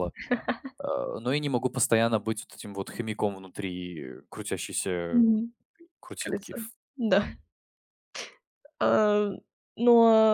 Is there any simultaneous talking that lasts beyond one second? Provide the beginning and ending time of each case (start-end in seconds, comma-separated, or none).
none